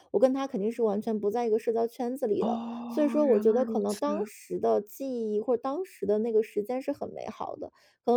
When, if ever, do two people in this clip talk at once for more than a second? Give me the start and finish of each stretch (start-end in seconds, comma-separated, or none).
2.4-4.0